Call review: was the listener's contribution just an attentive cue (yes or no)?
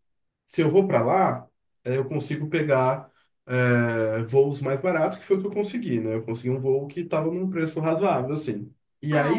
no